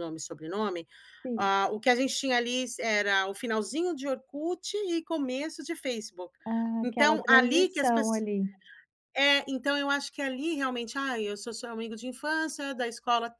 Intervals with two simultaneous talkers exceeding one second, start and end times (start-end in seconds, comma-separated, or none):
6.8-8.2